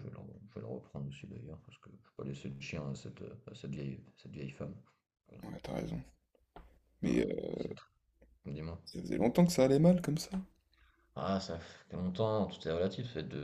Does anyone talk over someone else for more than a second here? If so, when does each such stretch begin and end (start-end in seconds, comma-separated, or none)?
none